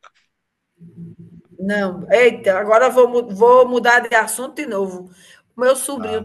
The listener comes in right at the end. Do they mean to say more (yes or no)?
no